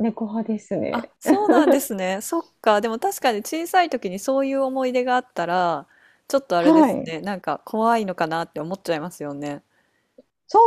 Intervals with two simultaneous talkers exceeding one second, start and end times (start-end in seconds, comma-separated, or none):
none